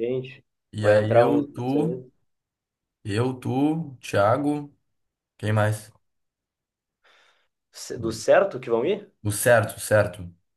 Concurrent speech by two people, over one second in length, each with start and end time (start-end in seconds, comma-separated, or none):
0.8-2.0